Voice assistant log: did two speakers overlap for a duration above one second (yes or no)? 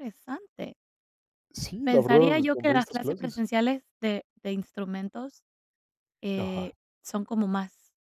yes